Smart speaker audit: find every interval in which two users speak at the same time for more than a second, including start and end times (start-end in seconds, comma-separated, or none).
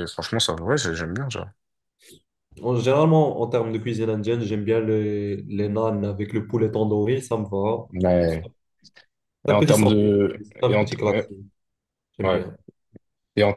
9.5-11.3